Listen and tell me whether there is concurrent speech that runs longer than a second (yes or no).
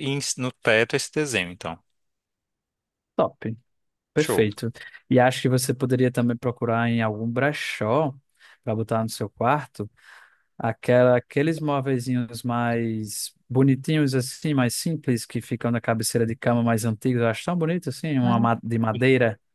no